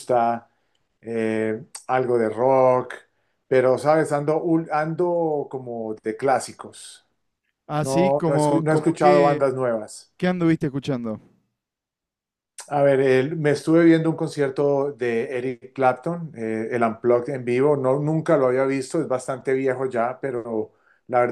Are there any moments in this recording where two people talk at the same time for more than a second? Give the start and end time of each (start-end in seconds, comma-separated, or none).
7.8-9.5